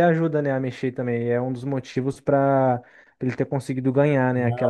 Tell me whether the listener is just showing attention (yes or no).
no